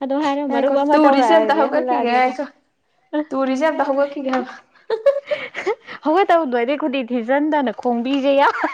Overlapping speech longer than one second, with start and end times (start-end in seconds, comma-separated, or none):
0.5-2.4